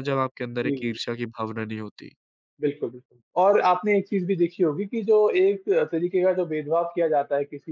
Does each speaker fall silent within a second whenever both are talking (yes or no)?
yes